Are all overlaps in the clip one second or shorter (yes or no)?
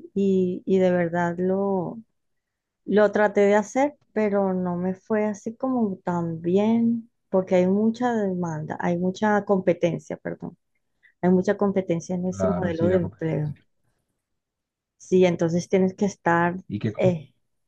no